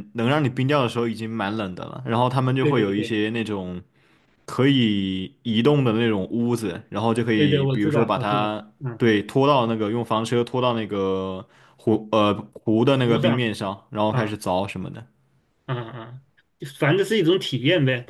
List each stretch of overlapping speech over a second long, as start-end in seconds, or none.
7.3-9.0